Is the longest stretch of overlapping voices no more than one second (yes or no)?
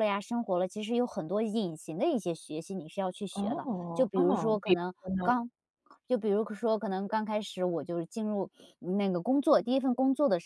no